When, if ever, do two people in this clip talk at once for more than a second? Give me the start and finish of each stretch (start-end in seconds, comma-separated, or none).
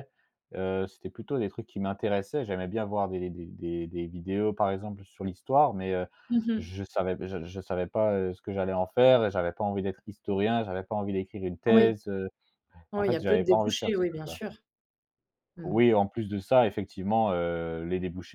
12.9-14.4